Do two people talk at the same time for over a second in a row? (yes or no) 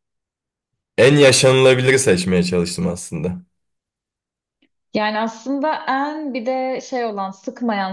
no